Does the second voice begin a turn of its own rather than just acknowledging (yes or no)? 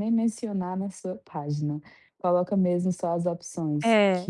yes